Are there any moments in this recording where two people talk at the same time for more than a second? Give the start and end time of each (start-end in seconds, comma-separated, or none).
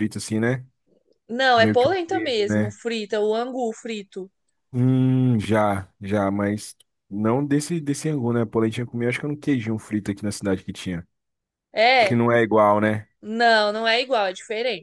1.5-2.7